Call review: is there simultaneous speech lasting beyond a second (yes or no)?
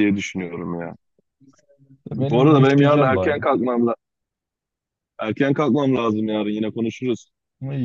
yes